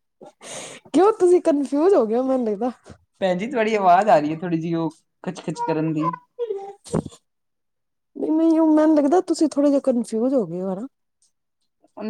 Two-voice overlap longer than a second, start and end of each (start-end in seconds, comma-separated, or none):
none